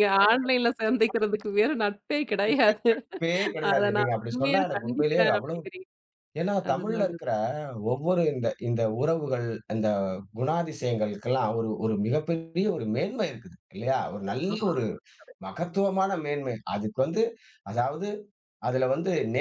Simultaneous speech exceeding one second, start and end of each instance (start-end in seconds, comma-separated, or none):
3.7-5.6